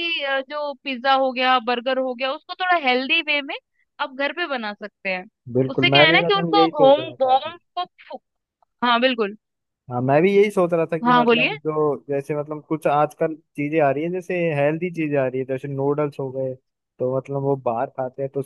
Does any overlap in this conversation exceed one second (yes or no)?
yes